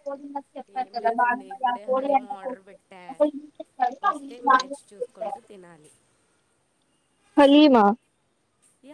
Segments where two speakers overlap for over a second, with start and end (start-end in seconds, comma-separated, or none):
0.8-3.0